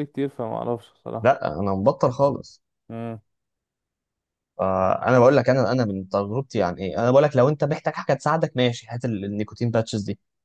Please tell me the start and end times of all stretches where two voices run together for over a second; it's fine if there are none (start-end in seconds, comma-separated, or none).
none